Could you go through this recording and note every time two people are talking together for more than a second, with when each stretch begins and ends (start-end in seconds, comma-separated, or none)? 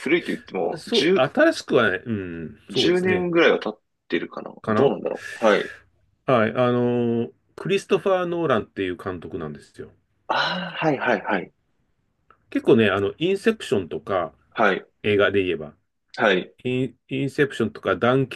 none